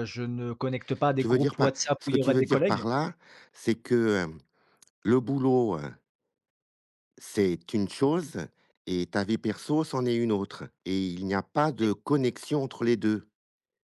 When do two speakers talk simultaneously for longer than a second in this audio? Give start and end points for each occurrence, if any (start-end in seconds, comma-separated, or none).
1.2-2.8